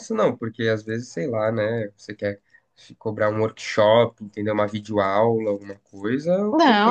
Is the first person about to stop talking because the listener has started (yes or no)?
yes